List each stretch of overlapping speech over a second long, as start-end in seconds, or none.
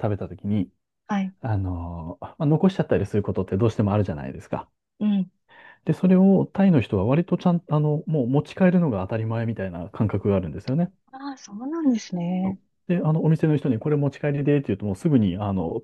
none